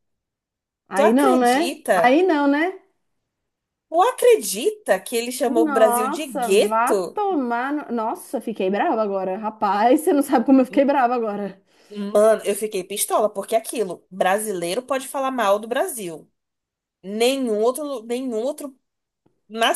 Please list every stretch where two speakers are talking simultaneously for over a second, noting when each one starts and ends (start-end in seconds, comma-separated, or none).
5.4-7.2